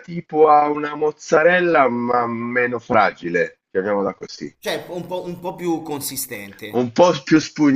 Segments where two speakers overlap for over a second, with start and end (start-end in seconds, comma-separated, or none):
none